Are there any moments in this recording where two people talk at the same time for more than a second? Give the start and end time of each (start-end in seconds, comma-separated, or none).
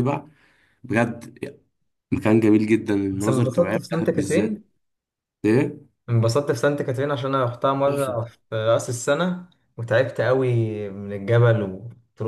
3.1-4.6